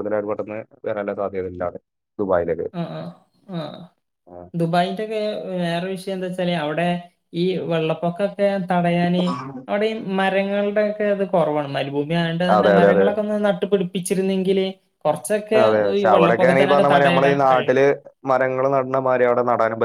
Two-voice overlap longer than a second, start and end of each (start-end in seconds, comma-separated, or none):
16.0-17.8